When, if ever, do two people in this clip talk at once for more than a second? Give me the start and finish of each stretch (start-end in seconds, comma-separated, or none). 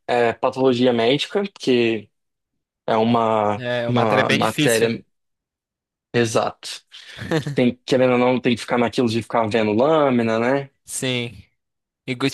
3.6-4.9